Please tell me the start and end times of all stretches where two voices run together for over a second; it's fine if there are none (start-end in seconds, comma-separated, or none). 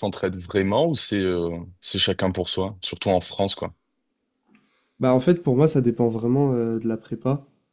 none